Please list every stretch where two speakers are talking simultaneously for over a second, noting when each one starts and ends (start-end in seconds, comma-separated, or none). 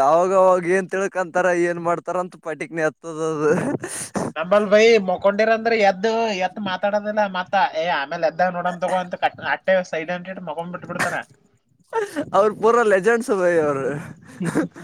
none